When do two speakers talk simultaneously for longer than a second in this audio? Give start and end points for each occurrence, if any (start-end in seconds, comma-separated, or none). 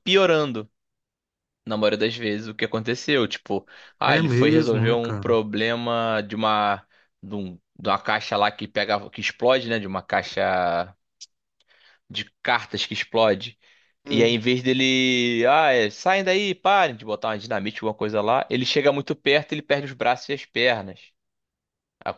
4.0-5.2